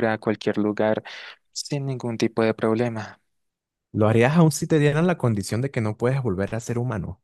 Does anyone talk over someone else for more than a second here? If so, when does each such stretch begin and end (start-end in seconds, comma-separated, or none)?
none